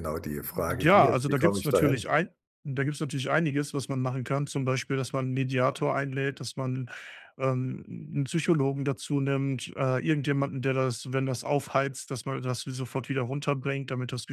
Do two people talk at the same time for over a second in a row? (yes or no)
yes